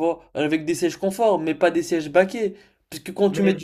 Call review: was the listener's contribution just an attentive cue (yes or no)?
yes